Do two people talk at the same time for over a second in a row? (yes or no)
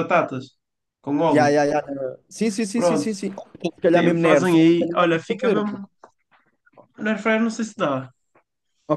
yes